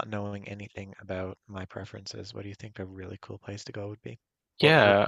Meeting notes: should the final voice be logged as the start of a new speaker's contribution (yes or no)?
yes